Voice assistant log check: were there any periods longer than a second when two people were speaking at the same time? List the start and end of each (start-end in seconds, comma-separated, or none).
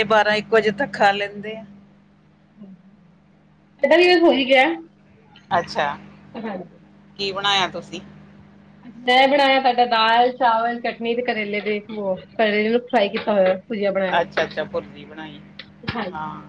none